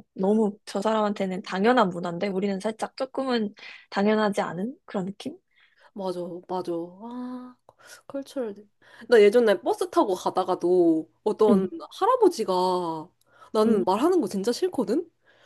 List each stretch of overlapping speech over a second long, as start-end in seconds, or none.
none